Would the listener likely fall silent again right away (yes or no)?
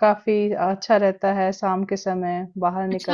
no